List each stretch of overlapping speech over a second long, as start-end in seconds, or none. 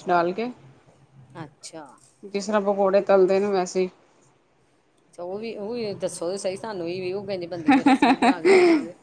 none